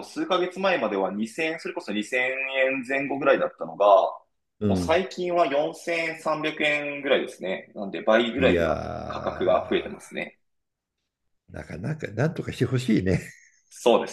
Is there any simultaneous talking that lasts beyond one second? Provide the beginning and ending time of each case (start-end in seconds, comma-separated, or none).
8.4-9.9